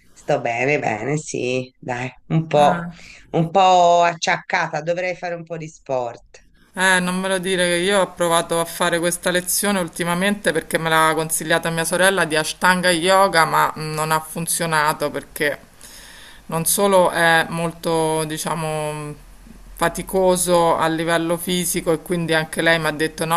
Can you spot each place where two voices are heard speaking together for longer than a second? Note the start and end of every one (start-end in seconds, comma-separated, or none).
none